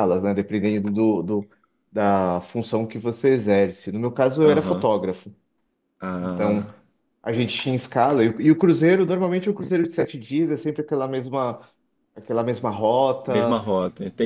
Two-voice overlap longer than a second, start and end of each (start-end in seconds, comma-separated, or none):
none